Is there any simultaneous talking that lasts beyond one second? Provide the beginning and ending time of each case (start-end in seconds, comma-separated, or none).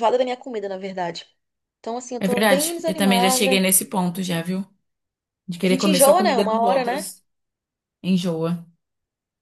2.2-3.7, 5.6-7.1